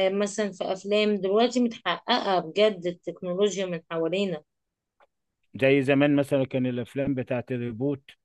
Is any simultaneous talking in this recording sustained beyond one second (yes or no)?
no